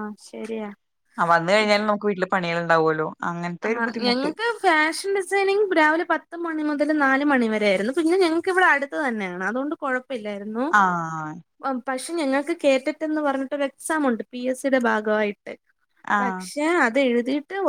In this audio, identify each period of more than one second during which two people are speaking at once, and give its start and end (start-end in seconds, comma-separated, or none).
none